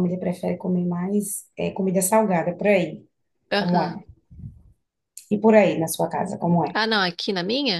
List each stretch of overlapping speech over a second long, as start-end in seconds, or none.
none